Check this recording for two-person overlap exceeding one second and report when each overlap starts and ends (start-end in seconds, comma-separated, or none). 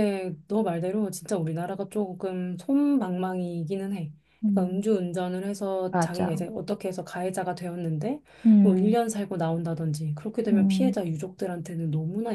none